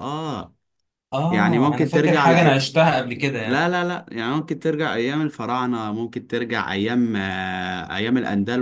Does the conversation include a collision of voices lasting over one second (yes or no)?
yes